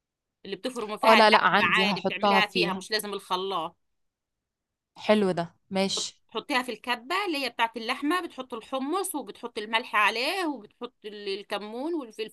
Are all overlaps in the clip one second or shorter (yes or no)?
no